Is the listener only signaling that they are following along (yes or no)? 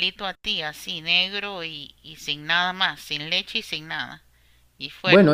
no